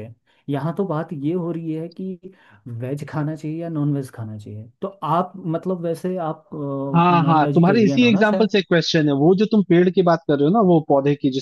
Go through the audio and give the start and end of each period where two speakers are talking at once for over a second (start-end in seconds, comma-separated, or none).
7.1-8.5